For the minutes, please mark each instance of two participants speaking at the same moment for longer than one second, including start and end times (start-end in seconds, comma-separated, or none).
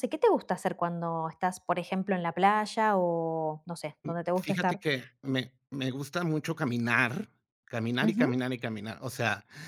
none